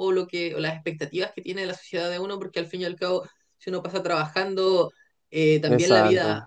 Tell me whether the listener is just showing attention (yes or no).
yes